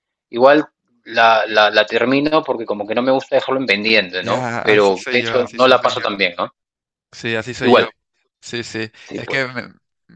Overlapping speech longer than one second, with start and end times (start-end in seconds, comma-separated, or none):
4.2-5.9